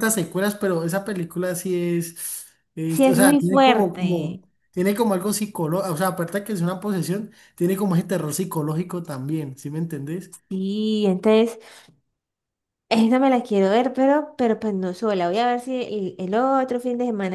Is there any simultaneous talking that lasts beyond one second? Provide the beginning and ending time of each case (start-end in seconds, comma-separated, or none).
2.9-4.4